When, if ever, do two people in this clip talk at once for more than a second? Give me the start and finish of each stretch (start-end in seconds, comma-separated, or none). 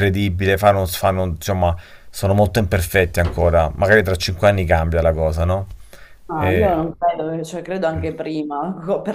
none